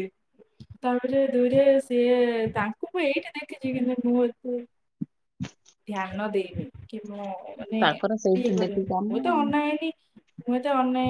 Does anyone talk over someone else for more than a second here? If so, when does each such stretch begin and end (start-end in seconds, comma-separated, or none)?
7.8-9.5